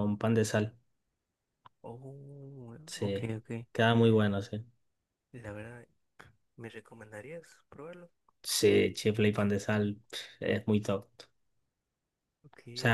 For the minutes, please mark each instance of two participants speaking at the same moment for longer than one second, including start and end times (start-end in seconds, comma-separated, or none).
none